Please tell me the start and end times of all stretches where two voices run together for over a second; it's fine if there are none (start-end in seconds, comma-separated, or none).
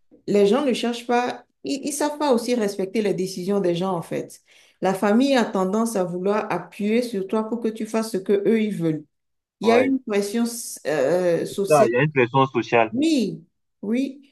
none